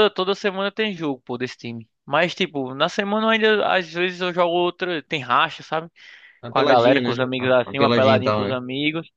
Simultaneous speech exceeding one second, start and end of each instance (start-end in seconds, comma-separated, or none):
6.5-8.6